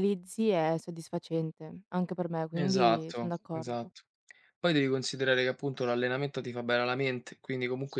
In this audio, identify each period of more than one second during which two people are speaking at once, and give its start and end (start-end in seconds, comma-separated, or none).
2.5-3.9